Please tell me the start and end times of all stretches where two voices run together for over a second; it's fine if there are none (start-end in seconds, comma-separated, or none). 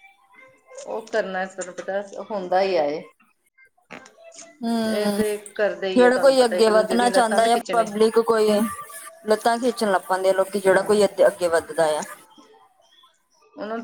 none